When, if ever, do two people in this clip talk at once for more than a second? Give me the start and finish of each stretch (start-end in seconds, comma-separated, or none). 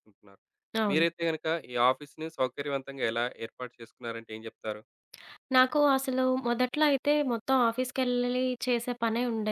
none